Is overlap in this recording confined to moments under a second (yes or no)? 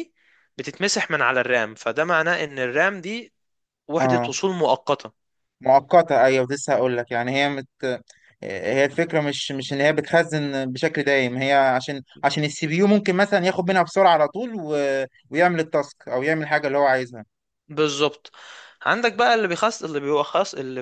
yes